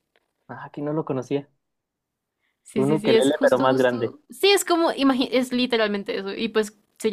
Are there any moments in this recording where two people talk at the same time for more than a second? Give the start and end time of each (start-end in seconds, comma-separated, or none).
2.8-4.2